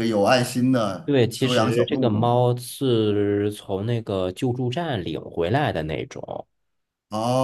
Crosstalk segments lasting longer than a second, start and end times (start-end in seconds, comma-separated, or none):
1.1-2.4